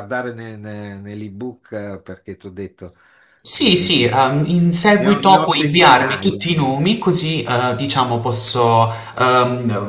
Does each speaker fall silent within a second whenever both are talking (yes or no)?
no